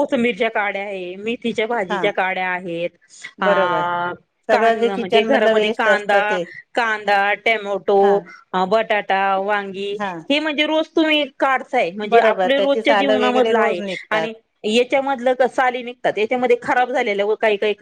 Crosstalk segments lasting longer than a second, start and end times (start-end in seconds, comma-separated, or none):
4.5-6.2, 12.1-14.3